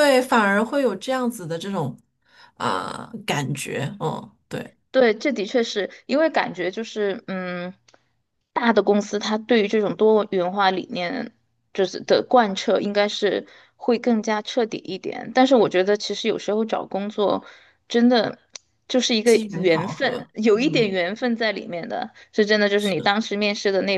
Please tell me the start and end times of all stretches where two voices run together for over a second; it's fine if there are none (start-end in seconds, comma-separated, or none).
19.2-21.0